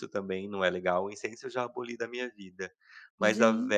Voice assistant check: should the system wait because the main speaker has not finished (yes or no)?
yes